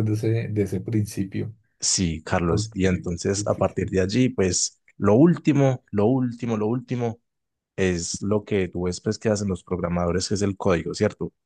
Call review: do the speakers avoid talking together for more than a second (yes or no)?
no